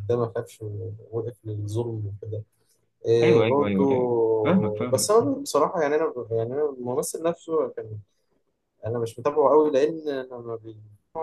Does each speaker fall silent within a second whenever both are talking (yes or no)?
no